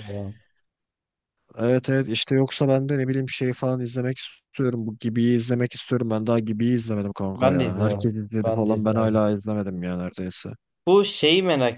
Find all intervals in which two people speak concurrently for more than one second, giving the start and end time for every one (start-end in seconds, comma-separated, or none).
7.3-9.2